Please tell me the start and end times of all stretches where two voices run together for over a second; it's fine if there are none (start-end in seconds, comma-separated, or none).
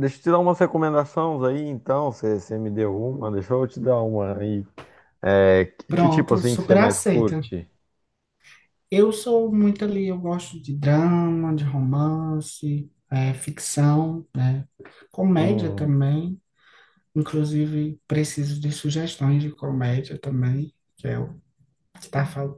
5.9-7.4